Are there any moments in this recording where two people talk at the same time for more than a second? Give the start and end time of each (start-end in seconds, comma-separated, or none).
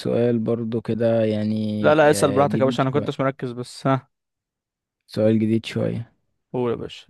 1.8-3.1